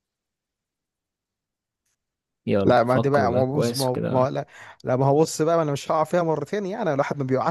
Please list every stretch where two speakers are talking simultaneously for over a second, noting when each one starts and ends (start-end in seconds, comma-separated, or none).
2.6-4.3